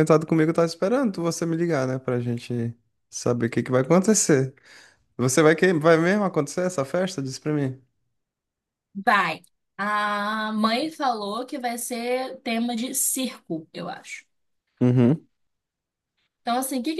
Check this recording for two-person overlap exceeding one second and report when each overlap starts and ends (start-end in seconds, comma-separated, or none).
none